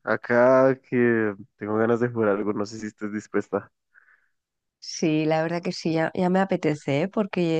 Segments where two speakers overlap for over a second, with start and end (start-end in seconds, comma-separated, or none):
none